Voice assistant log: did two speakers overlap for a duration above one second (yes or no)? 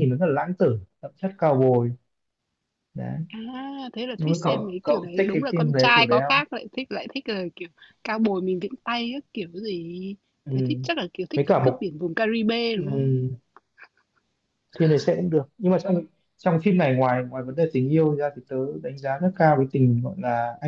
yes